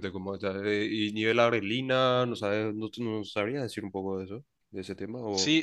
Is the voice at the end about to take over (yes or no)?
yes